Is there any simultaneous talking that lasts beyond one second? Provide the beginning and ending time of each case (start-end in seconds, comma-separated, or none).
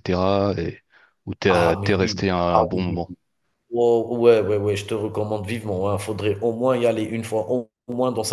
1.5-3.0